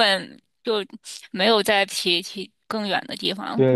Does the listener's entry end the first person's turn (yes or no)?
yes